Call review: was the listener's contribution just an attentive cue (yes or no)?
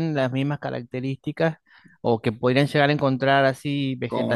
yes